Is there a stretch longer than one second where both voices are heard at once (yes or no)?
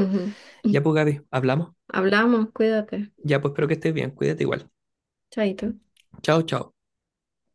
no